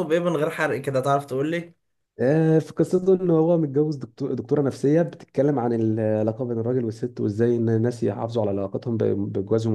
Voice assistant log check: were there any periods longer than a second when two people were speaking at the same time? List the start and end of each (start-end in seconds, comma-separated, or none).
none